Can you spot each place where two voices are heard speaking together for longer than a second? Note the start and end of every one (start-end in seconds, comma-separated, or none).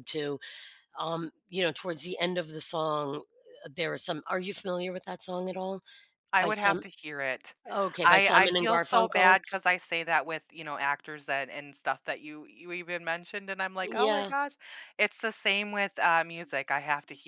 8.0-9.4